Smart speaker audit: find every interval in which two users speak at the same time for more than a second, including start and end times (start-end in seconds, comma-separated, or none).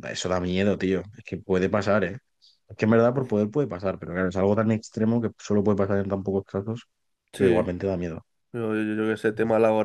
none